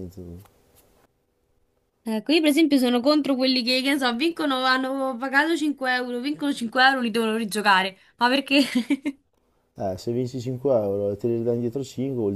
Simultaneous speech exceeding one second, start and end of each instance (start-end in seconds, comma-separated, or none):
none